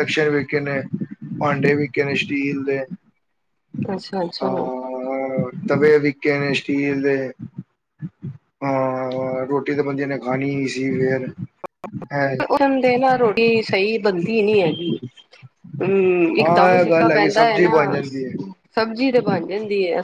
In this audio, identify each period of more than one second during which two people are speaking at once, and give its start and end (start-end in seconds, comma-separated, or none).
16.4-18.0